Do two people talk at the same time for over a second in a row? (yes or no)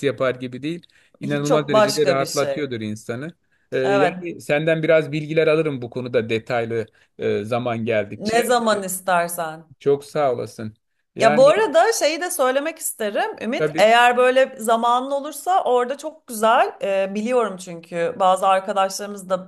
yes